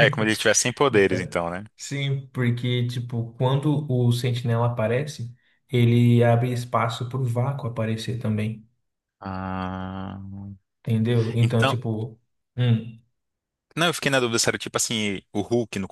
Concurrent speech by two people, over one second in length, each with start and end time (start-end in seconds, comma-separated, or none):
none